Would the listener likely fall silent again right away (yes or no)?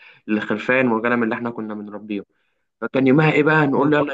yes